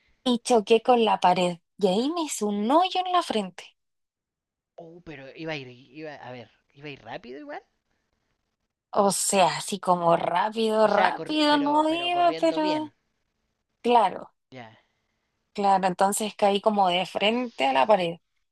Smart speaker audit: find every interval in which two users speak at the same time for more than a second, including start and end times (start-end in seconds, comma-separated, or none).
10.9-12.8